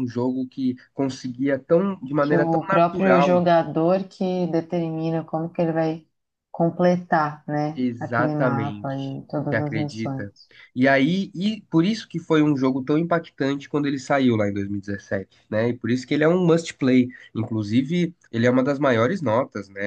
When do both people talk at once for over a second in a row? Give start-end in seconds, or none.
2.2-3.4, 7.7-10.3